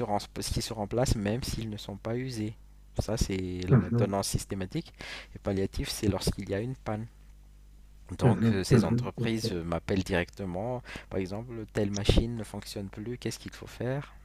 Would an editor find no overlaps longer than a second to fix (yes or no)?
no